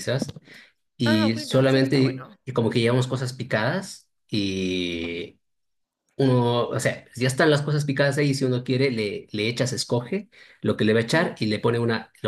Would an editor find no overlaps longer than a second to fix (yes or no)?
no